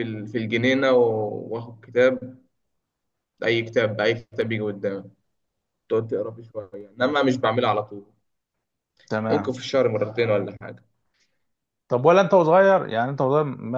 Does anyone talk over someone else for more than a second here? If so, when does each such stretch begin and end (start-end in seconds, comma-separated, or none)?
none